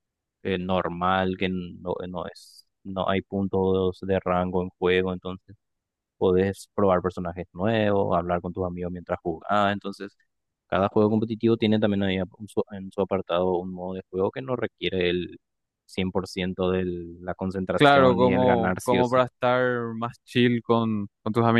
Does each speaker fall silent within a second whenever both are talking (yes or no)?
no